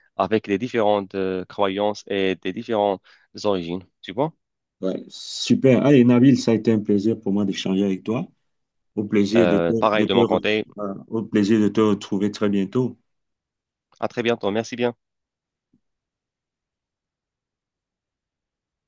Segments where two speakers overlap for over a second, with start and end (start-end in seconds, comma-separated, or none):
9.3-10.6